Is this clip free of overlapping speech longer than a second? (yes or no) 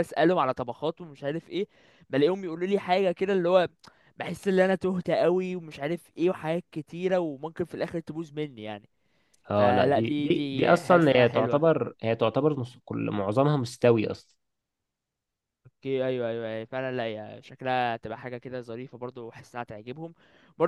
no